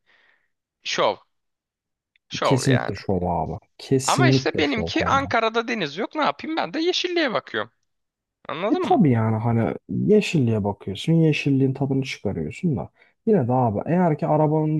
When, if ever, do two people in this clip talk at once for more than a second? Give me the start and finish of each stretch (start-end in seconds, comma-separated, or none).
4.0-5.3